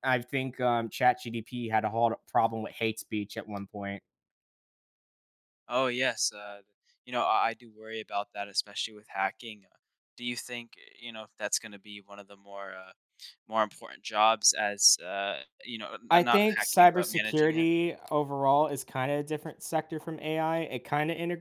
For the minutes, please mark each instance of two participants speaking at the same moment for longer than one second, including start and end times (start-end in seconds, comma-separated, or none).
16.1-17.7